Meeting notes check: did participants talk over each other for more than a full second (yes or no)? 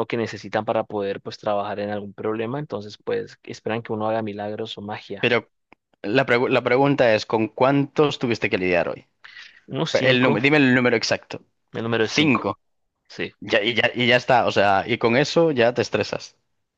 no